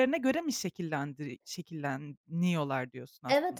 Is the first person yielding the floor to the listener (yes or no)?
yes